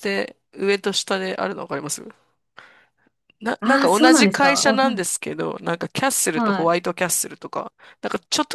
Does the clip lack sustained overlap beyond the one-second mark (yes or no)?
no